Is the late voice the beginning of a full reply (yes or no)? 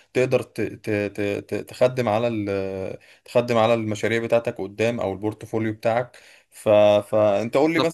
no